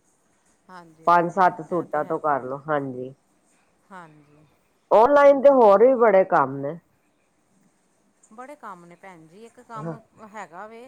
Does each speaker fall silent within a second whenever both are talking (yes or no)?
no